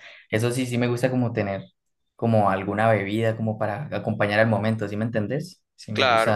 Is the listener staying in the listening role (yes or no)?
no